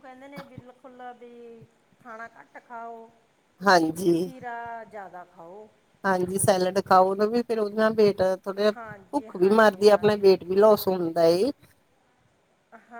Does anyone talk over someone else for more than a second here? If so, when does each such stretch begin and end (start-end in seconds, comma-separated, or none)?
8.8-10.3